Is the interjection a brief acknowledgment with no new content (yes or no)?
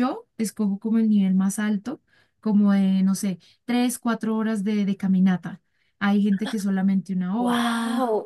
no